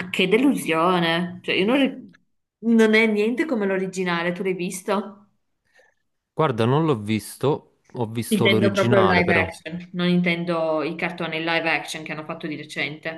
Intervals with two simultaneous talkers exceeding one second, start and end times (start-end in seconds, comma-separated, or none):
8.3-9.5